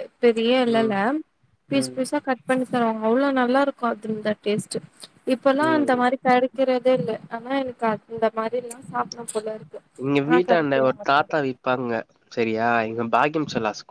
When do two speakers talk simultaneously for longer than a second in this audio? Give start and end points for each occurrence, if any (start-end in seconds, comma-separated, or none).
none